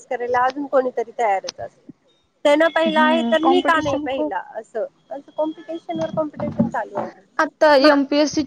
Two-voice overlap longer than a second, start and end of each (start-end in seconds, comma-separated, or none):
2.9-4.3